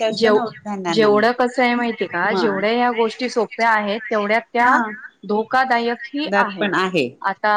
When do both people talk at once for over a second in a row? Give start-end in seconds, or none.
none